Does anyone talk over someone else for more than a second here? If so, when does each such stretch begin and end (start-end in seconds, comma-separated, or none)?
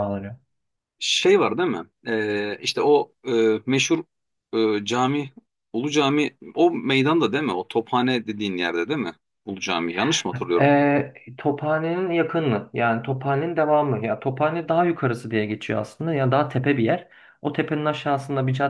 none